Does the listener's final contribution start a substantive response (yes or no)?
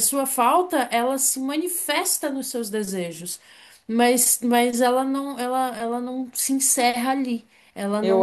yes